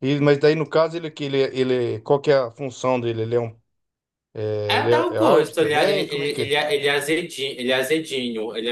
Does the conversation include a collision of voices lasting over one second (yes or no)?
yes